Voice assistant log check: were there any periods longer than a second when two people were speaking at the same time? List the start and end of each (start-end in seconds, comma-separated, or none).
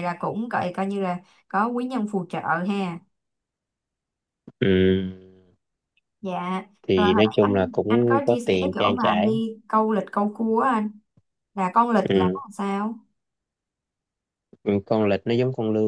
6.9-9.3